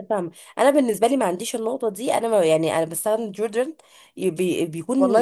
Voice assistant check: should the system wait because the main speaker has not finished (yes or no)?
no